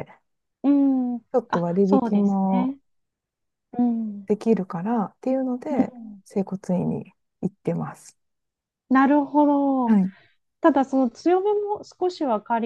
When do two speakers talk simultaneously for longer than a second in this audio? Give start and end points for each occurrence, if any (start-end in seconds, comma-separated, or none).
1.3-2.8